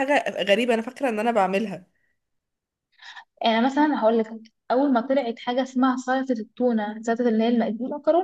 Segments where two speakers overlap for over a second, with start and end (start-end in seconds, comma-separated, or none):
none